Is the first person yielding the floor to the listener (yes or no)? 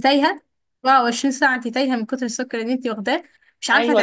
yes